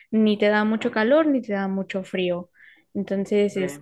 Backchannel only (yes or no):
no